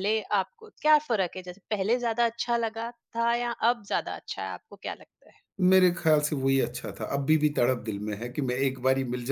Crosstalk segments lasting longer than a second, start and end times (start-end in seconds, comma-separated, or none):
none